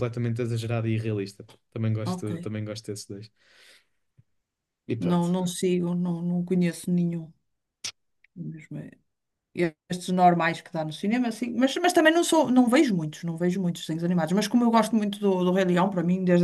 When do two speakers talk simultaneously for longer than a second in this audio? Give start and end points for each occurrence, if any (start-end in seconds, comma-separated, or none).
none